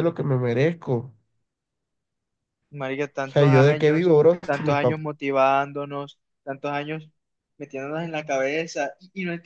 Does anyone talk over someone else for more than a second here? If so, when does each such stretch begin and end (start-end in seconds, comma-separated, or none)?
3.2-5.0